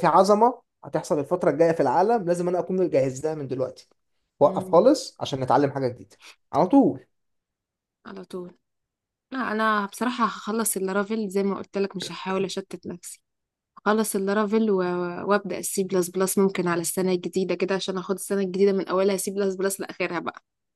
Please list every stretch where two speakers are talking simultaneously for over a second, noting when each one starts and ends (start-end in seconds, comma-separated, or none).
none